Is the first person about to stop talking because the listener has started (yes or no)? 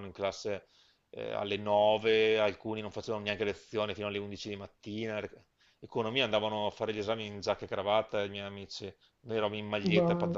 yes